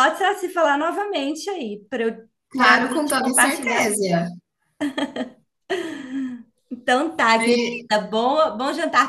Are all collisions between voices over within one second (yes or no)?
no